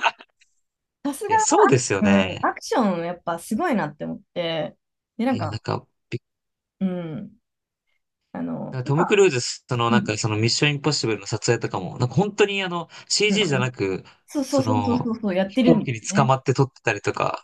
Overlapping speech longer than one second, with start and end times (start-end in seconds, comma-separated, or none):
14.5-16.3